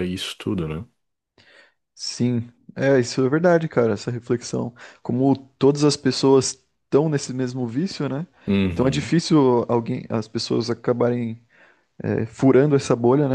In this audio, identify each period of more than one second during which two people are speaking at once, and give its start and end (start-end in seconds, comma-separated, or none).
none